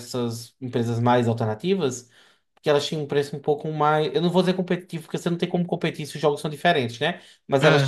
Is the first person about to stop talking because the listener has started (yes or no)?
no